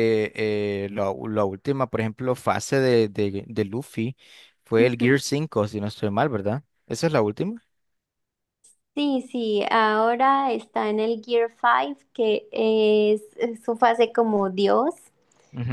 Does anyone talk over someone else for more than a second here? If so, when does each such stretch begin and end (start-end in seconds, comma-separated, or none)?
none